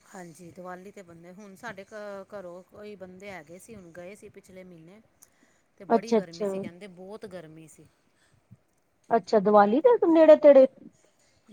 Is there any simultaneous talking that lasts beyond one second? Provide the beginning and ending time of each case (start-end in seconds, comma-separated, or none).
none